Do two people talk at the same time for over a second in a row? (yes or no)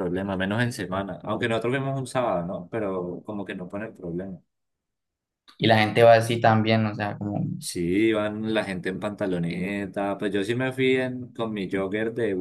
no